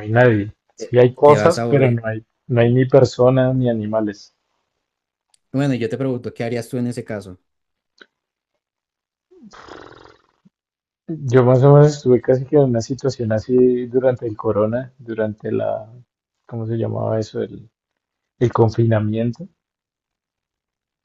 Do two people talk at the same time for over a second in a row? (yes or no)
yes